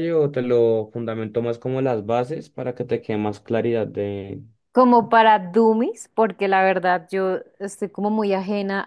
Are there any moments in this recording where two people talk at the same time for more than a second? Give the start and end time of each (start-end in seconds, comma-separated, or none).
none